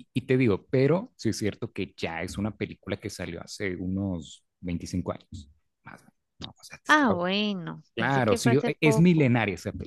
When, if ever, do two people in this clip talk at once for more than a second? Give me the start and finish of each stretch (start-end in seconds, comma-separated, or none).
7.9-9.3